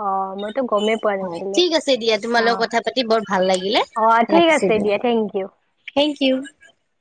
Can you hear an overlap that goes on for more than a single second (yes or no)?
no